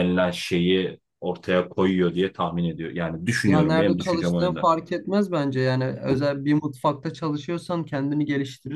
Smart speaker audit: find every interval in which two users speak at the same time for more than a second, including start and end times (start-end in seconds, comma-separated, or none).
3.5-4.7